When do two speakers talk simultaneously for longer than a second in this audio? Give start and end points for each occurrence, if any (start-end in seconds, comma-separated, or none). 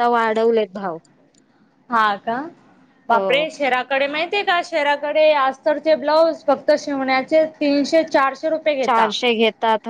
none